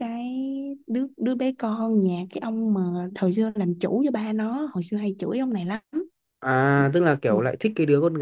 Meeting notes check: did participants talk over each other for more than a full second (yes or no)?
no